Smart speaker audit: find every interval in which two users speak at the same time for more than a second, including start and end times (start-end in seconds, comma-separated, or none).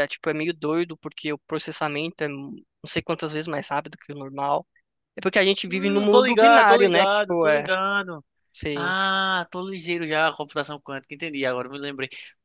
5.7-7.7